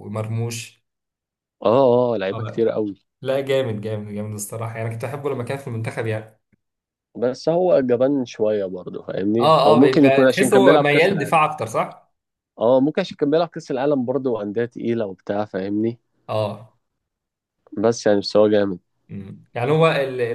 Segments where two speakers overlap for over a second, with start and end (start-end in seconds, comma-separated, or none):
9.4-11.4